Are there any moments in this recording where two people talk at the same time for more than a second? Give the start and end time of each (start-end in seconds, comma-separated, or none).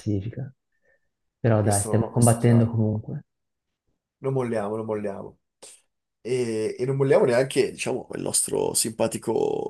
1.6-2.8